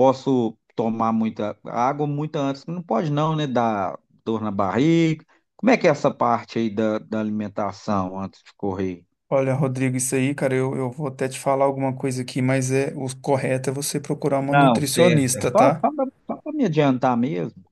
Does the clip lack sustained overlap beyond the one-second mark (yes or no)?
no